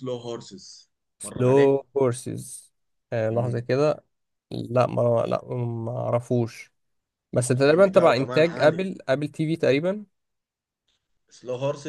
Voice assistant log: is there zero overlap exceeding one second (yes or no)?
no